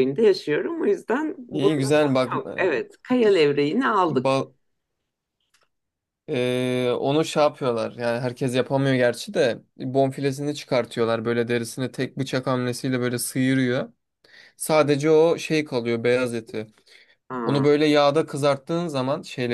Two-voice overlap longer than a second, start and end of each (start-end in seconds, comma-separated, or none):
1.5-2.8